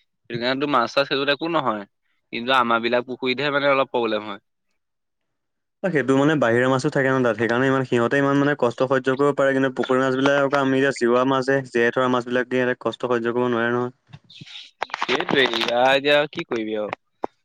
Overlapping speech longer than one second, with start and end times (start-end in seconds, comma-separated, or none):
none